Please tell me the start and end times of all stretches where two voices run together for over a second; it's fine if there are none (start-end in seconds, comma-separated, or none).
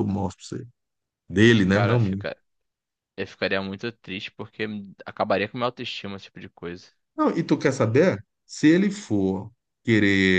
none